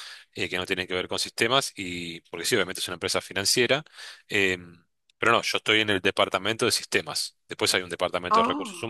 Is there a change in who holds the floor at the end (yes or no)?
no